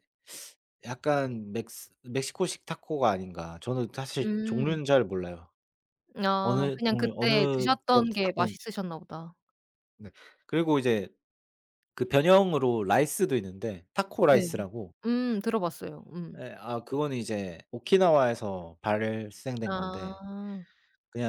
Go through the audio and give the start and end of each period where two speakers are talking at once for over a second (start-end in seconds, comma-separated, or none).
6.4-8.7